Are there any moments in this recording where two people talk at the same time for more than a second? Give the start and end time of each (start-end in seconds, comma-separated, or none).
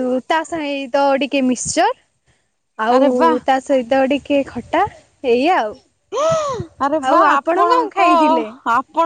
7.1-8.5